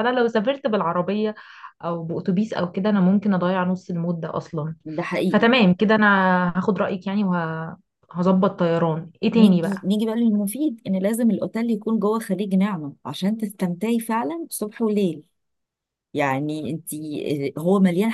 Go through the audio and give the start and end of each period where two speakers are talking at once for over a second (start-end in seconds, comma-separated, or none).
none